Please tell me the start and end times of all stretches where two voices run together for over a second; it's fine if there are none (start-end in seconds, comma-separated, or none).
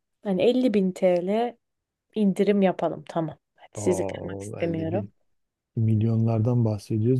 3.8-5.1